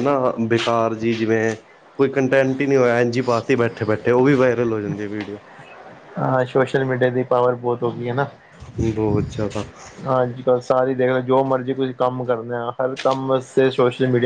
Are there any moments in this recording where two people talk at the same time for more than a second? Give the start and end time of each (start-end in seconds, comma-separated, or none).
none